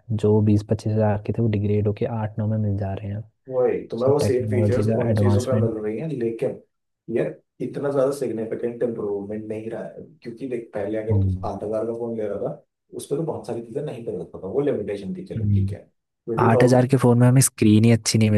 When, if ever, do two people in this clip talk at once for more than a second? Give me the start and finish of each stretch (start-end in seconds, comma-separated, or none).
4.0-5.7